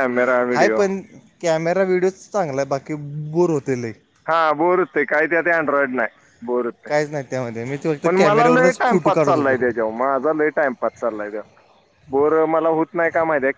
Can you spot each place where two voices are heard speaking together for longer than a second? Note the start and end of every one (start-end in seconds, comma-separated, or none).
8.0-9.6